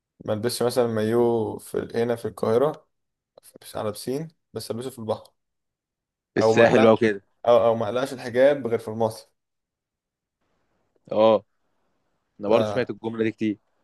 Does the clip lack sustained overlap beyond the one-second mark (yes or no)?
yes